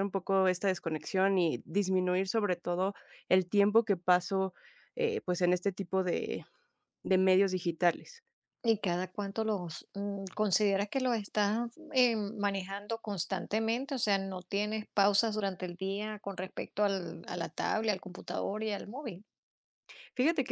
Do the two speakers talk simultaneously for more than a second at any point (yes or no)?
no